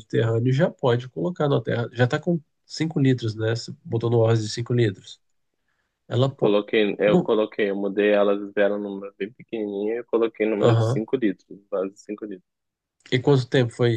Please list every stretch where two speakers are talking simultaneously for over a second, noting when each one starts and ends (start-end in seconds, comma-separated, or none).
none